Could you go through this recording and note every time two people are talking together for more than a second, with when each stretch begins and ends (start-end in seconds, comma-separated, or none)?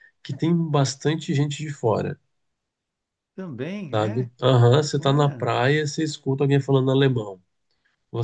none